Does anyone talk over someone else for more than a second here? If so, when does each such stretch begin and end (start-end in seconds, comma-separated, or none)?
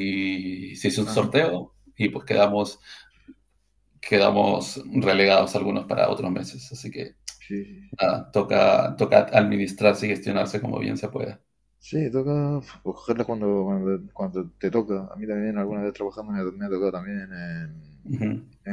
none